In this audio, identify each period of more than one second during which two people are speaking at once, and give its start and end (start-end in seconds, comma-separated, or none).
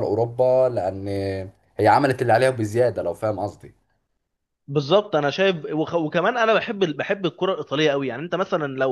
none